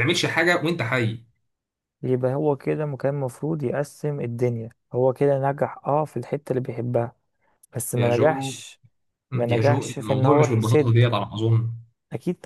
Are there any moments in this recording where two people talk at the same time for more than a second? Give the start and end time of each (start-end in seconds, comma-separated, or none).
9.5-11.0